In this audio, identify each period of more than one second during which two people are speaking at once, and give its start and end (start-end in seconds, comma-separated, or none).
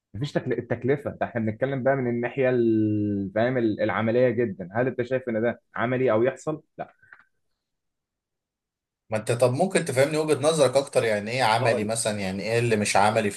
none